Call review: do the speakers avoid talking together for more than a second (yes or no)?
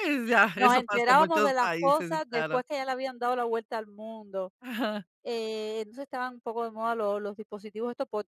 no